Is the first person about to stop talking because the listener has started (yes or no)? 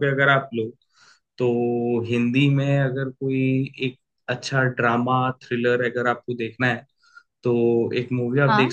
no